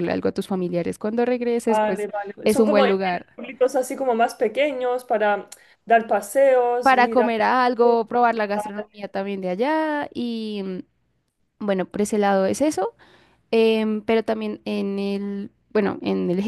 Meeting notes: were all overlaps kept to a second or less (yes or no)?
no